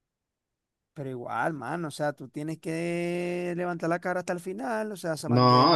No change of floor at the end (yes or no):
no